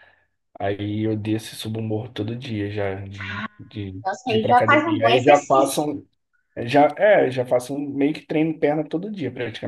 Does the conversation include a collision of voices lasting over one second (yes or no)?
yes